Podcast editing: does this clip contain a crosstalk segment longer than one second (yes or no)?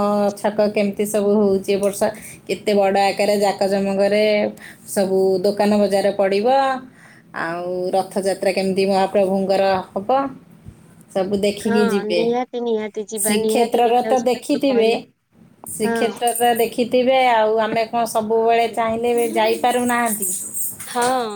yes